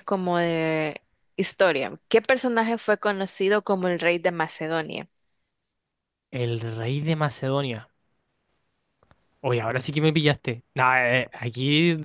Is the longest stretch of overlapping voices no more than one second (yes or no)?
yes